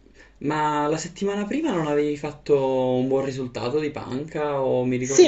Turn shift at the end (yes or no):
yes